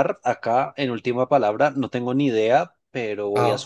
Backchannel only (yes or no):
yes